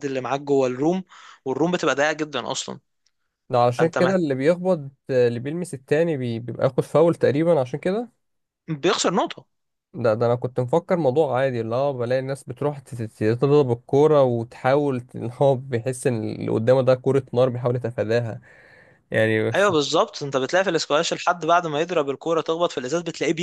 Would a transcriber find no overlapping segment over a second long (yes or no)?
yes